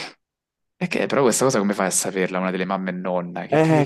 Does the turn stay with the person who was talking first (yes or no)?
no